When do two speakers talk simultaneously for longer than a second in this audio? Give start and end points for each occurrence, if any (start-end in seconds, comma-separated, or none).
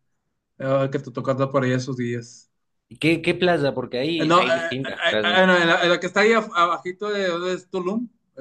none